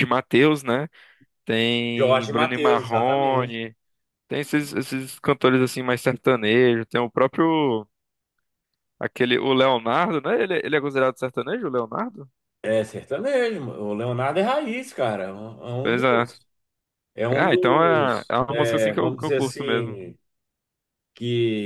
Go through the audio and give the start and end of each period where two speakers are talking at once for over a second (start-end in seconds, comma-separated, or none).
2.0-3.6, 17.4-20.0